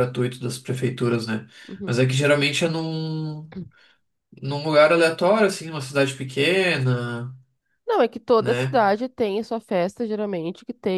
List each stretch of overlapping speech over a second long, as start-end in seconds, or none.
none